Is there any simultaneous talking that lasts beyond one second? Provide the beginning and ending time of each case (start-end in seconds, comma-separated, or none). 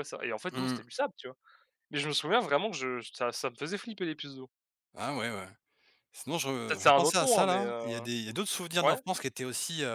6.7-8.1